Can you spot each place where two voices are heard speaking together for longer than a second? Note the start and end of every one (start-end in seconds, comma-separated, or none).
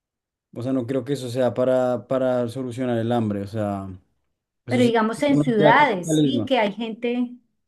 4.7-6.5